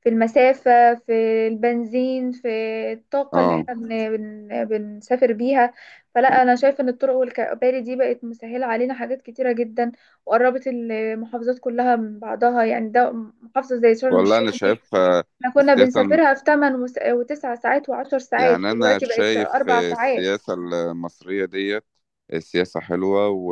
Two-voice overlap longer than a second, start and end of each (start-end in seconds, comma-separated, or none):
18.4-20.4